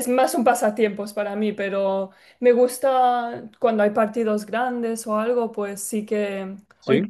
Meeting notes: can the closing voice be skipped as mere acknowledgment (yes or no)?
yes